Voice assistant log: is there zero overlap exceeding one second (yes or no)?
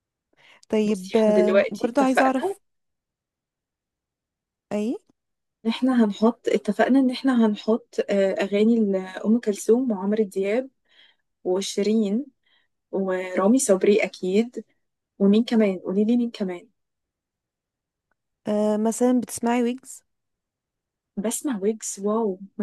no